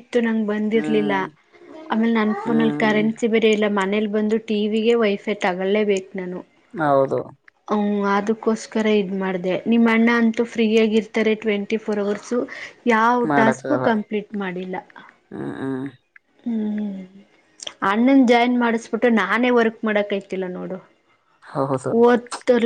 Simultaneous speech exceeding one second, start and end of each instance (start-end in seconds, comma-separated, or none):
none